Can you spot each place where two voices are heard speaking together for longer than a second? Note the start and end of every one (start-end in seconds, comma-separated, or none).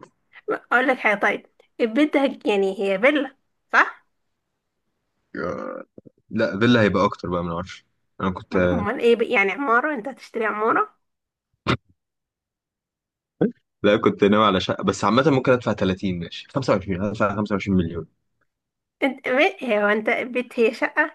none